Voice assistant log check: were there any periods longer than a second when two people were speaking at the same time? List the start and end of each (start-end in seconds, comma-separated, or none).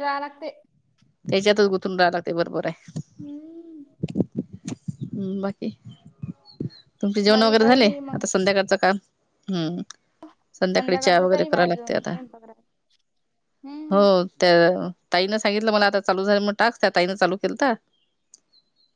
10.7-12.1